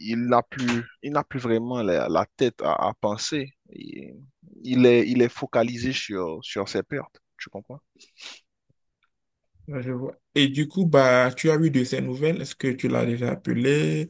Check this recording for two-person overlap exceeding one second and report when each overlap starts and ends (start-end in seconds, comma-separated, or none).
none